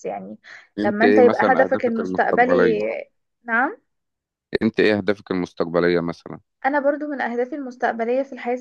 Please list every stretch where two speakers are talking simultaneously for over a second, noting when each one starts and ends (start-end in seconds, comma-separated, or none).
0.8-2.8